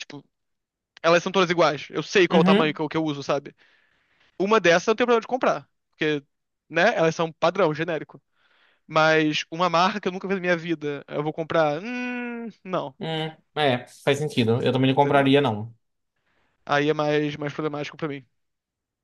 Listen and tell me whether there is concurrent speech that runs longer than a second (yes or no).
no